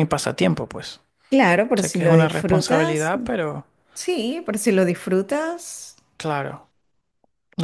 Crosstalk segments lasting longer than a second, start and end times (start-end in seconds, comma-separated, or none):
1.8-3.1